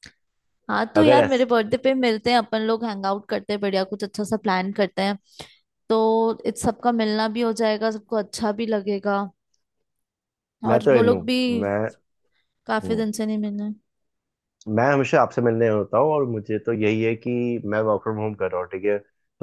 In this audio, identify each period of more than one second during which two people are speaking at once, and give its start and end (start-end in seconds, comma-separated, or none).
none